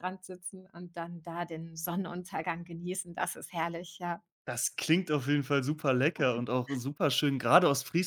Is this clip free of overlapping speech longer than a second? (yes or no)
yes